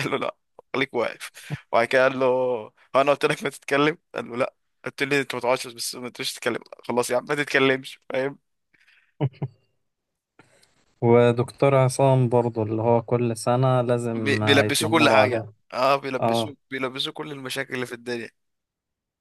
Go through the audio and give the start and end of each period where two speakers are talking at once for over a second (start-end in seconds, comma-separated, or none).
14.1-15.5